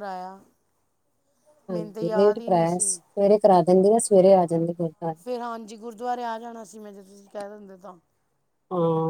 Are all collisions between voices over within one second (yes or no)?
no